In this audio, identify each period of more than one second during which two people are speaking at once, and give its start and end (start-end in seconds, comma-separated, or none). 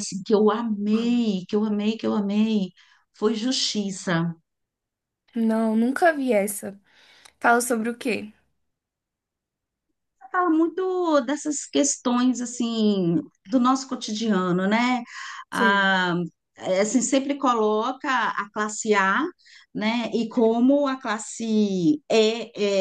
none